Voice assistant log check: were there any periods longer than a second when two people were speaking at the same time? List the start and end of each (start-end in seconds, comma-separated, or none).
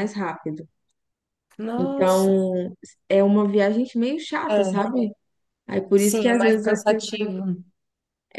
6.0-7.3